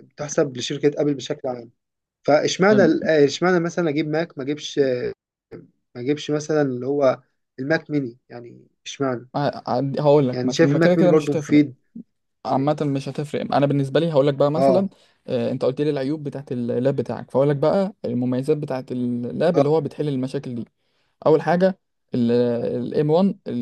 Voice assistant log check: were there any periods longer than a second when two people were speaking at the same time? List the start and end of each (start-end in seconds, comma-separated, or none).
10.3-11.6